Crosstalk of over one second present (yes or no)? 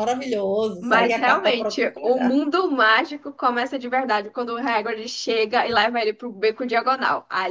yes